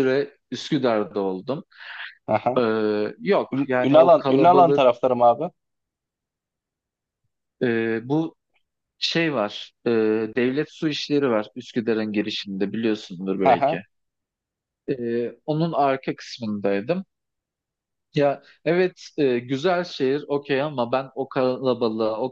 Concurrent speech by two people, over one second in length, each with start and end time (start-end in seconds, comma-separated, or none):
3.5-4.8